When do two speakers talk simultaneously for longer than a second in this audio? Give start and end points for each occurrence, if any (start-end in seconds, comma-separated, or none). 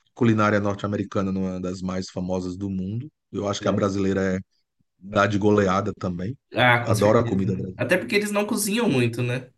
6.8-8.1